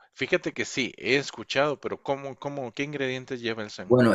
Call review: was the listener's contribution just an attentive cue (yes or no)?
no